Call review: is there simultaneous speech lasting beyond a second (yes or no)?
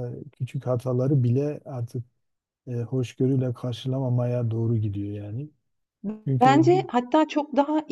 no